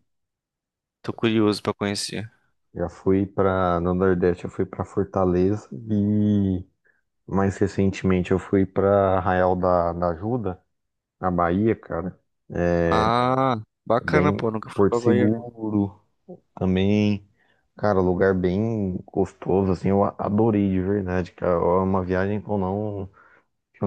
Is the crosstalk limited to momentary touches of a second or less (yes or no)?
no